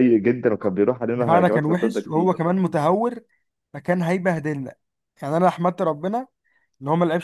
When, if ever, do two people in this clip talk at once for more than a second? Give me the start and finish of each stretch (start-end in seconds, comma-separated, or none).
1.1-2.5